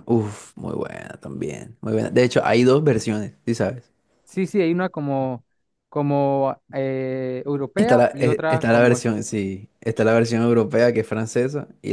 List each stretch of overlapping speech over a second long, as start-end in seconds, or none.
7.8-9.1